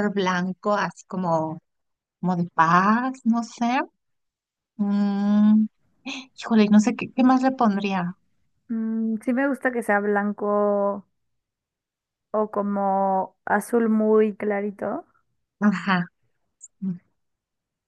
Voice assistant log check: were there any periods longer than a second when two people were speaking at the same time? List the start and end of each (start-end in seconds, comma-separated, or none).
none